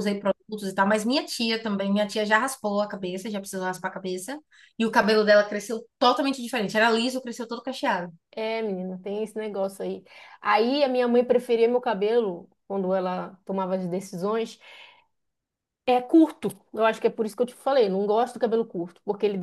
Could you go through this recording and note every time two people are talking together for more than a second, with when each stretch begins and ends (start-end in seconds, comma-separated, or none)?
none